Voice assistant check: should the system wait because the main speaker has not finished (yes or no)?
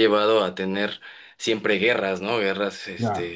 yes